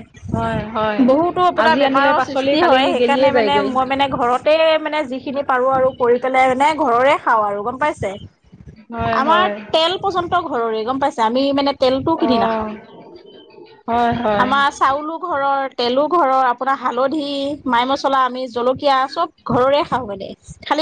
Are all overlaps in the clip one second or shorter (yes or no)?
no